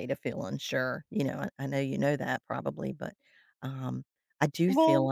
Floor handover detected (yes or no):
no